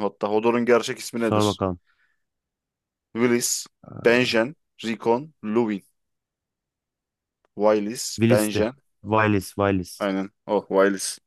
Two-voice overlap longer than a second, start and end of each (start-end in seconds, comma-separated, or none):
none